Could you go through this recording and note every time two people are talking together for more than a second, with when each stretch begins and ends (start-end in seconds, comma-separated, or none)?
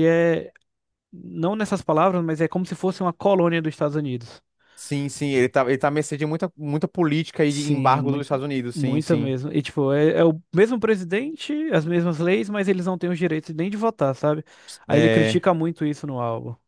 7.5-9.3